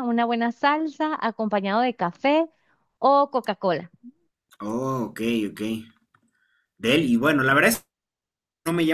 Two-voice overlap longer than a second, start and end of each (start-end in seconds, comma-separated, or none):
none